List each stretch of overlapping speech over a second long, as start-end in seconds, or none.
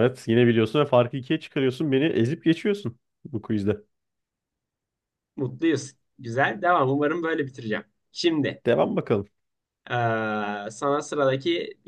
none